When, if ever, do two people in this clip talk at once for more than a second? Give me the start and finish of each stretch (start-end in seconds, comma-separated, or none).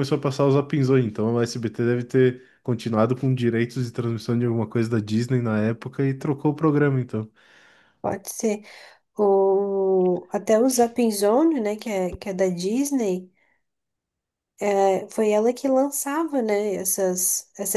none